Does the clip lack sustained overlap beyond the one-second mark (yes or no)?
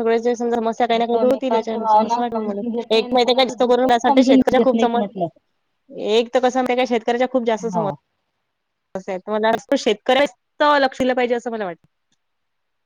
no